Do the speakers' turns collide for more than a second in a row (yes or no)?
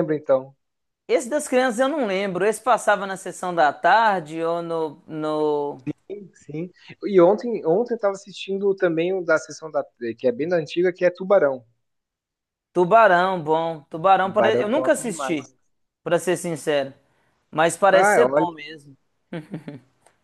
yes